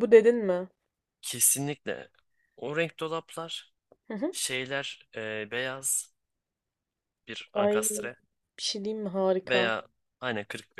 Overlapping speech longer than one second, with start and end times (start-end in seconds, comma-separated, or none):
none